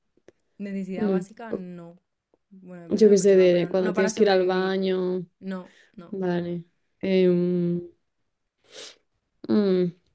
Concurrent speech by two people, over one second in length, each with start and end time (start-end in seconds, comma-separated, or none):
2.9-4.8